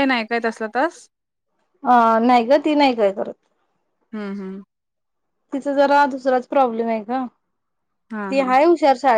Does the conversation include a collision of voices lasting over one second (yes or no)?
no